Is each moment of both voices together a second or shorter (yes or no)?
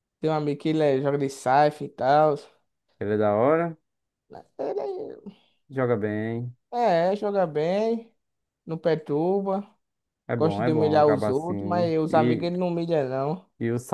no